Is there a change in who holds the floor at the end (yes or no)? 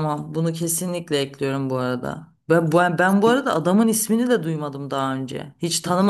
yes